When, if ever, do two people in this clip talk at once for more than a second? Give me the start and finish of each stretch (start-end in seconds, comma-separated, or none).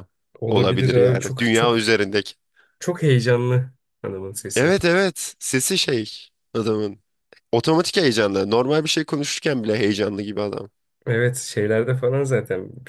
0.5-1.9